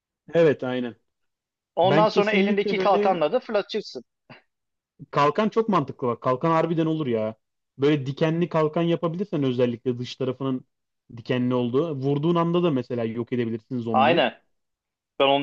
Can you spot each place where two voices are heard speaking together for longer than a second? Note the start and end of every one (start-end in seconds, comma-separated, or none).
1.8-3.2